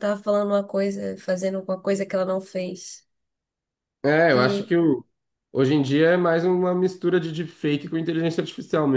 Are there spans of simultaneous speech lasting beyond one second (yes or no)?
no